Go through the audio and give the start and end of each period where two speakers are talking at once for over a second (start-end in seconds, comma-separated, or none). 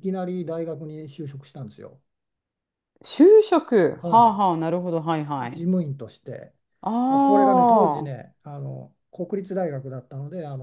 7.1-8.3